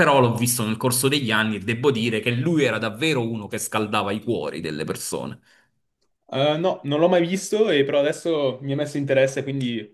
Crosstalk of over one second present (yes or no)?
no